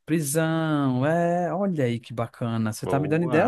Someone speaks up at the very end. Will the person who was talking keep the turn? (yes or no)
no